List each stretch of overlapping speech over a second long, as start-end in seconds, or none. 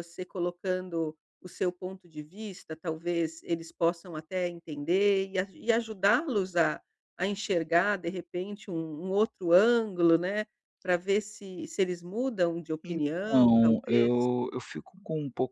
12.8-14.3